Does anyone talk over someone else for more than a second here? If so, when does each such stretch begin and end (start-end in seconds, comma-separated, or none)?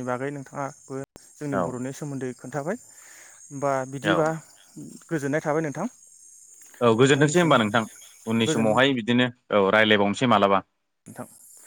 none